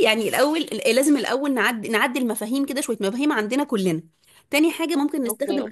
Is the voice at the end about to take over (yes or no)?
no